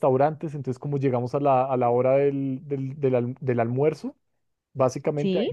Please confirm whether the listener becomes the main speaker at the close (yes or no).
no